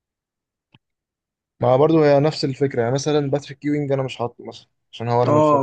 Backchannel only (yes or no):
no